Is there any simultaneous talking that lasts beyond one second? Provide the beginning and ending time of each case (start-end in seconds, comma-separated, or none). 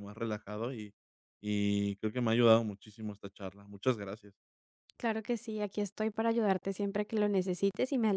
none